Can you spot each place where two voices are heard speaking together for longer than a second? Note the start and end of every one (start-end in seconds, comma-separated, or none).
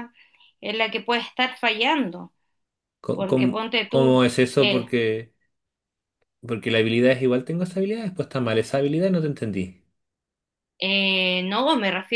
3.1-4.9